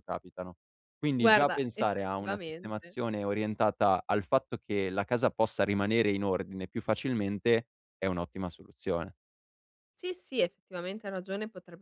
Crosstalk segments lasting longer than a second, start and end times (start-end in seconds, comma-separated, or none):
1.2-3.0